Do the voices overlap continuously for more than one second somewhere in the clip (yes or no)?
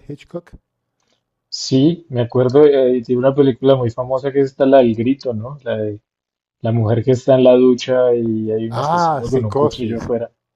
yes